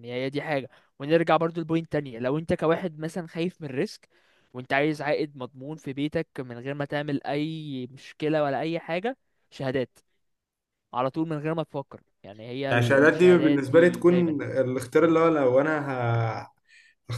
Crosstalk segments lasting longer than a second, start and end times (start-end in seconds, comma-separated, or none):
12.7-14.5